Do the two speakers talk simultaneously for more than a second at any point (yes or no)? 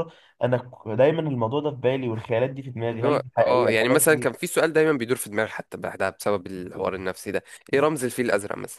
yes